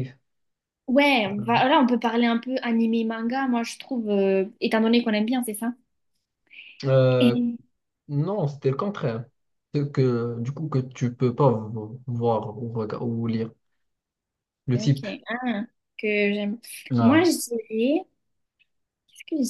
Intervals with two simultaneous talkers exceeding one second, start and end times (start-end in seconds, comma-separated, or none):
none